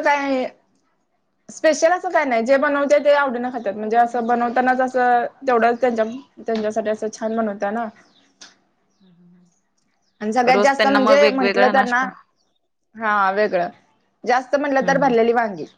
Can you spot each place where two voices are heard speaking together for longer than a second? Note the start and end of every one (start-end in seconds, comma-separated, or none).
10.5-12.0